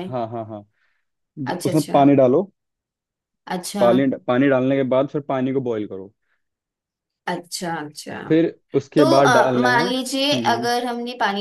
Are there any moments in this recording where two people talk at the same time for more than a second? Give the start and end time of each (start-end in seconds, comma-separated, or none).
9.0-10.7